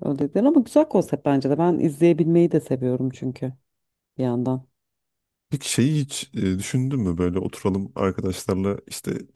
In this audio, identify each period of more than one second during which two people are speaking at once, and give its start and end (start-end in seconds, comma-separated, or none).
none